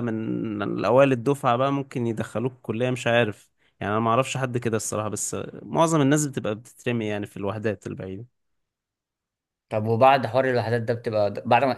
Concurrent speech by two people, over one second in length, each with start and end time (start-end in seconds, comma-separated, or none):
none